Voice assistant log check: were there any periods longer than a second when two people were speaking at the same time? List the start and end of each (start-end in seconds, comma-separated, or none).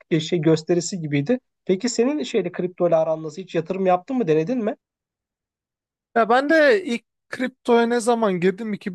none